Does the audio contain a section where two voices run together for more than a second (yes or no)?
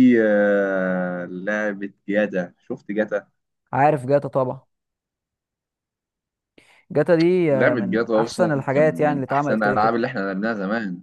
yes